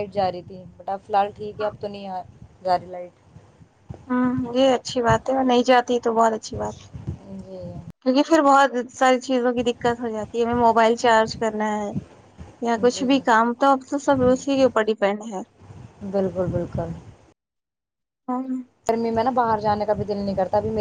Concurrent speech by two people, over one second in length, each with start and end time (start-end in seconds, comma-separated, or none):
none